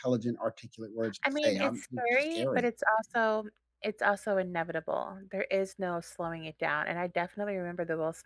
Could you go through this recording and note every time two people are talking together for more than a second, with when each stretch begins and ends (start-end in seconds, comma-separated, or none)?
1.2-2.7